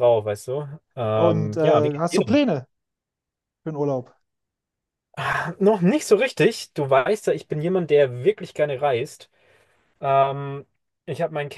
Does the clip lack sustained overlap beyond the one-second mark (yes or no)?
no